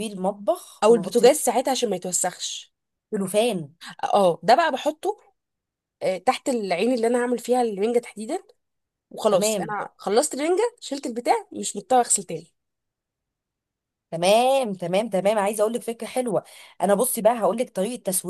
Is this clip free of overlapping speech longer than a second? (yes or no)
yes